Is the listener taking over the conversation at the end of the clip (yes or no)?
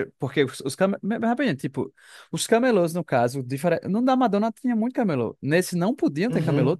yes